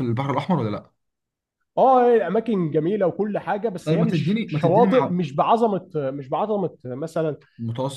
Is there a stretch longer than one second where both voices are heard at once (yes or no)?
yes